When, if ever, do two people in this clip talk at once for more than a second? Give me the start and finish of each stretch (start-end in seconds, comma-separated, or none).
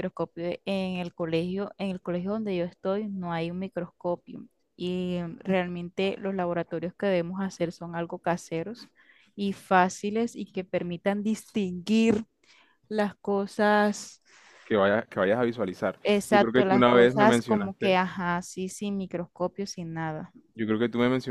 16.0-18.0